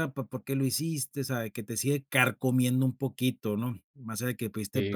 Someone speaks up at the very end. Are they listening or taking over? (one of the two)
listening